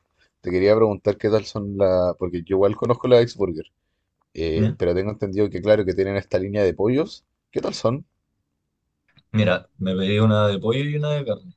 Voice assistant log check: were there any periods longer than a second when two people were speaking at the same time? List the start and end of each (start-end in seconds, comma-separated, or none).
none